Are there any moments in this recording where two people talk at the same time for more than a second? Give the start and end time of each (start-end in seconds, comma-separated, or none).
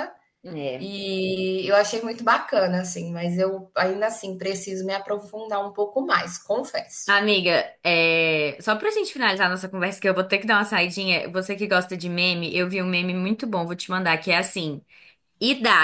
none